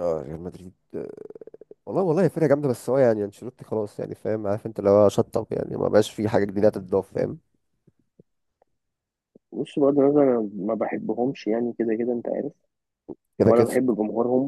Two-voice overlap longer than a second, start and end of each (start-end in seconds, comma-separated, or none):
none